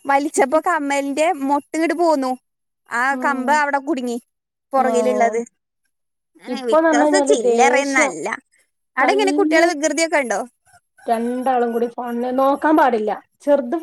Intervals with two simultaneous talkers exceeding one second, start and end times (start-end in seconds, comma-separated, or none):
6.5-8.1